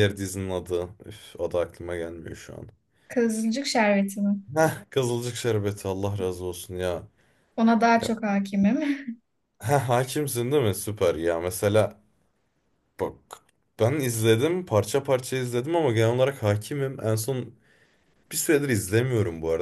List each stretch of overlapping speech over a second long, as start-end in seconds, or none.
none